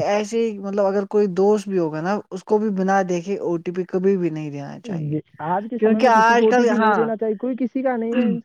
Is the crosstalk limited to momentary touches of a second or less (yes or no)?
yes